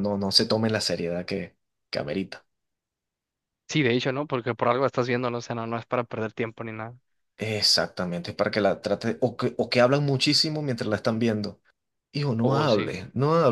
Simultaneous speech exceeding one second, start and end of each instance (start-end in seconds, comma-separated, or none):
none